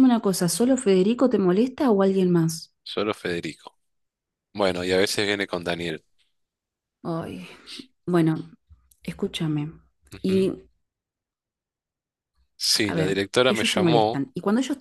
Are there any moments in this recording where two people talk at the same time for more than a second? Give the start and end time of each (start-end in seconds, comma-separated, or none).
12.8-14.2